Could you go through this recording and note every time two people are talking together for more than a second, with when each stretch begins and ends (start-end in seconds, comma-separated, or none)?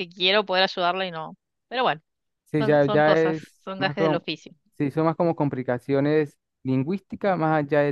2.6-4.2